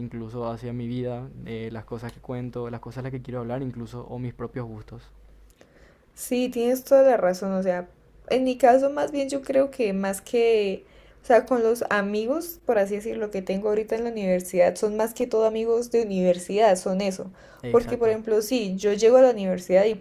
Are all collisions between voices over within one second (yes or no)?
yes